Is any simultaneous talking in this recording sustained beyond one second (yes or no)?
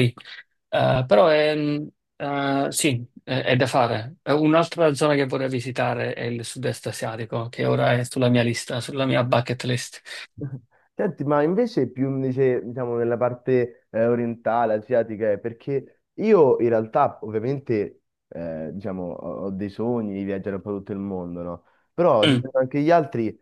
no